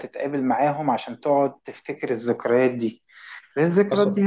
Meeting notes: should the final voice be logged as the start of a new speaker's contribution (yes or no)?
no